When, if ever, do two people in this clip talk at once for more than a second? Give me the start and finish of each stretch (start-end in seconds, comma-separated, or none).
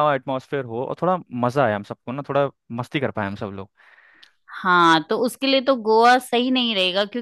none